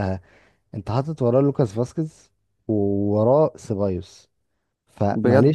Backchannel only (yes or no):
no